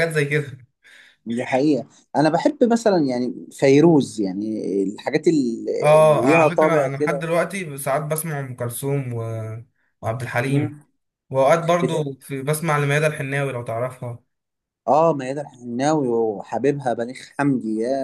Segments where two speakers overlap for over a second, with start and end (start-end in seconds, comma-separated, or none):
6.0-7.2